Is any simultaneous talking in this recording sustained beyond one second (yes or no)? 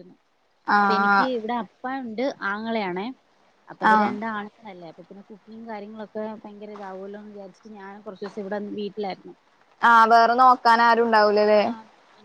no